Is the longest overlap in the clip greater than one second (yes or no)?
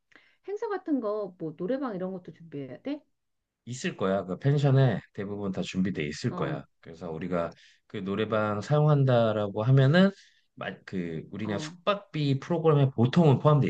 no